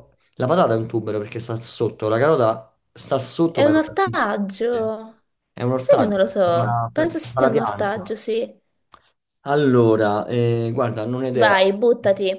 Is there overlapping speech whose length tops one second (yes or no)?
yes